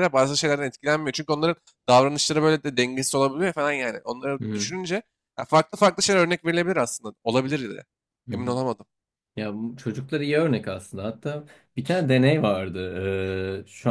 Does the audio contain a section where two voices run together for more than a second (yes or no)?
no